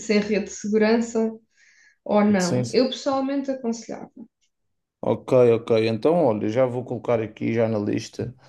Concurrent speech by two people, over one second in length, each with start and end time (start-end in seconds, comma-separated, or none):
none